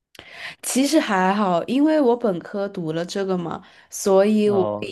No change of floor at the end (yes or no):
yes